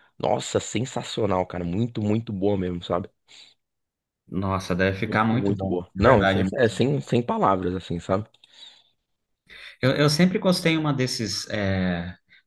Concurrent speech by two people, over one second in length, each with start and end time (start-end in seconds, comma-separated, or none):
5.0-6.4